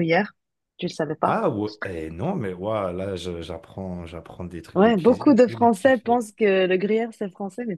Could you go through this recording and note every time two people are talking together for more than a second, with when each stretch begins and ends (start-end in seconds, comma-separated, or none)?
4.8-6.3